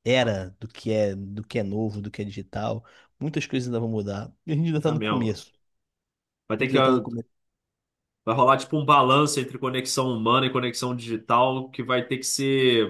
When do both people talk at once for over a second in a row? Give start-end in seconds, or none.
none